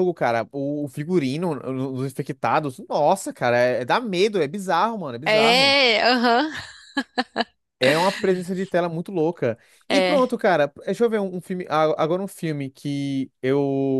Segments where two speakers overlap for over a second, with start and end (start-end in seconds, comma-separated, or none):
none